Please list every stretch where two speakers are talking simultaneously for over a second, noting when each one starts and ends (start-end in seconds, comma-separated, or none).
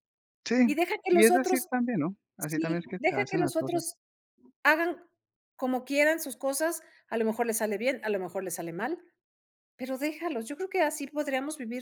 2.4-3.8